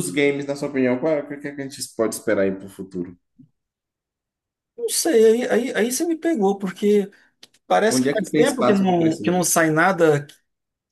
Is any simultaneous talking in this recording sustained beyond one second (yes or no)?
yes